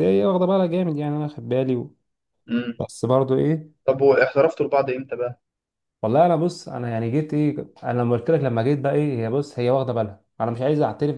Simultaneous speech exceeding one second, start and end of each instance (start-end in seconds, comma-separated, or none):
none